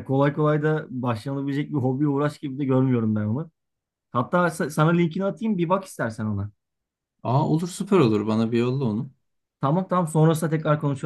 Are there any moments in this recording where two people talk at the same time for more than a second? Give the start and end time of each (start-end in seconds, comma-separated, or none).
none